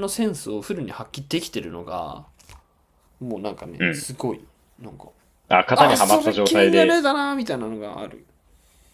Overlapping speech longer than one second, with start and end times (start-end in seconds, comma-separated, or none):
5.7-7.0